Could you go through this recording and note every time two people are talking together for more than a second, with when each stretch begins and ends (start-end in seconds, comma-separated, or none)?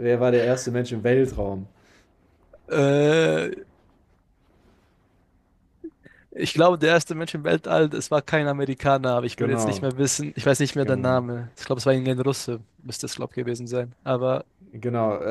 none